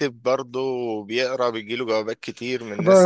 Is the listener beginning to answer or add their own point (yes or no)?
yes